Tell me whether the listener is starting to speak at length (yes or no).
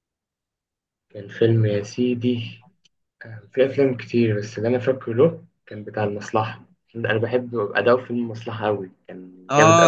yes